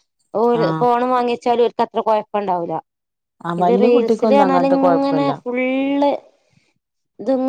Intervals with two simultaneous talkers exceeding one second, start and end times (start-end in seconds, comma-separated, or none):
3.6-5.3